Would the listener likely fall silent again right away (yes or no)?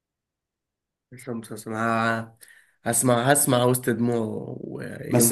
no